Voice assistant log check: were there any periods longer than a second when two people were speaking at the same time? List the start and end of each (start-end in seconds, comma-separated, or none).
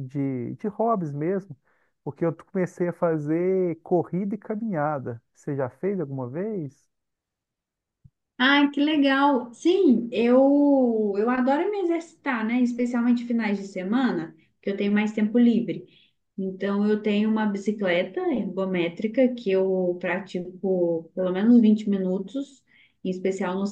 none